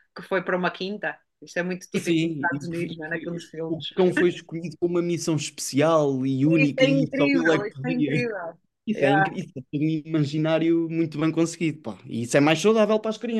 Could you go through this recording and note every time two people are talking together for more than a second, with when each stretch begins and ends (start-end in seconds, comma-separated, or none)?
2.0-3.9, 6.6-8.3